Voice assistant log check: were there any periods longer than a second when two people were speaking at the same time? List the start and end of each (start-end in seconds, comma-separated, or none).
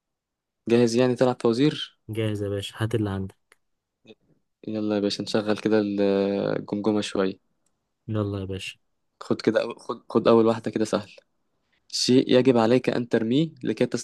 none